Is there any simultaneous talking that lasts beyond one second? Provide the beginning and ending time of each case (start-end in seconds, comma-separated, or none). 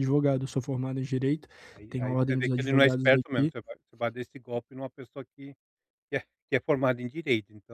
1.9-3.5